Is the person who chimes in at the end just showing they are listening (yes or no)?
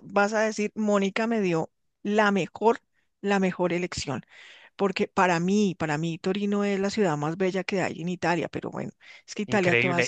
no